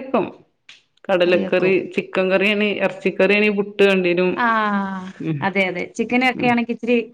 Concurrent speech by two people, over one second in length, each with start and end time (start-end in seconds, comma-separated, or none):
none